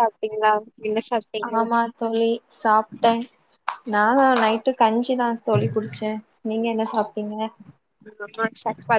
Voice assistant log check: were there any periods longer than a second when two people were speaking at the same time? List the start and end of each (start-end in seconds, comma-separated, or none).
none